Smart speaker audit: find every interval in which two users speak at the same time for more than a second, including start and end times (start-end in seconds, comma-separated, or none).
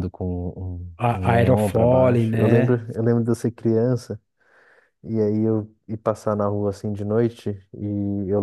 1.0-2.8